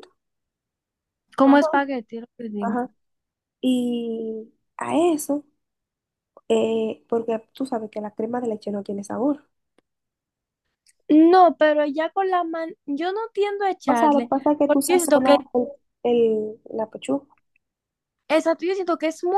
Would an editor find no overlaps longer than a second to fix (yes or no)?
no